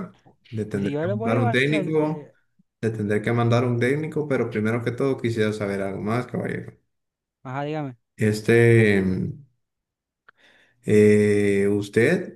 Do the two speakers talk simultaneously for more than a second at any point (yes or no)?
yes